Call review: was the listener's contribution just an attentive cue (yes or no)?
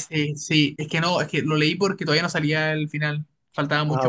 yes